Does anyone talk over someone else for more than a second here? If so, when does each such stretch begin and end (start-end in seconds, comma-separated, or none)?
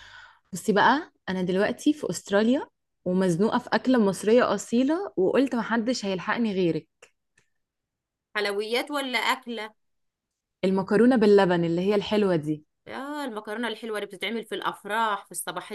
none